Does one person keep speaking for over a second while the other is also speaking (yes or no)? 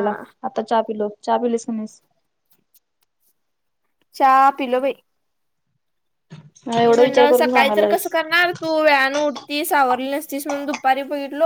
yes